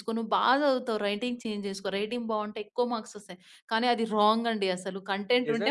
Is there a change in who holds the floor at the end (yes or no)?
yes